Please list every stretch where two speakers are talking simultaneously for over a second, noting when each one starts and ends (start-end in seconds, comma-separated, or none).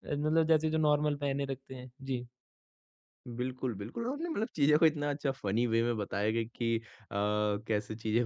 none